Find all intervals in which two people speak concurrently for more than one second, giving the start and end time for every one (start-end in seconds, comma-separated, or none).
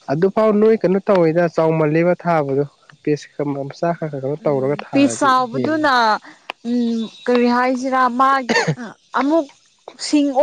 4.4-5.9